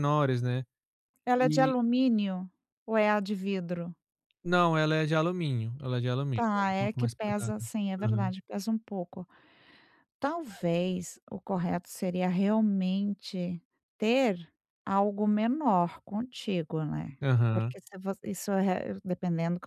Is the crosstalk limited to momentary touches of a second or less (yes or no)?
no